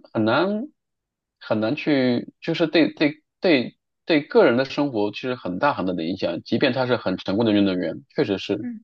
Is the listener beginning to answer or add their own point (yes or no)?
yes